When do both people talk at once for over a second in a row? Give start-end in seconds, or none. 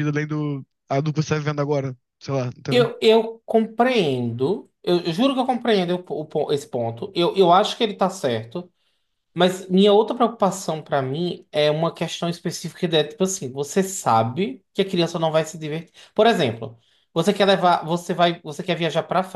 none